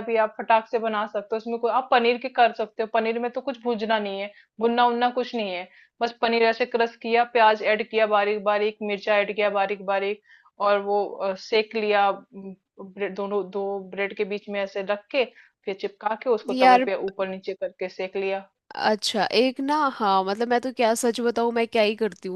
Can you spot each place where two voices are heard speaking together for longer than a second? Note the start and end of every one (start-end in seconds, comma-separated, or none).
none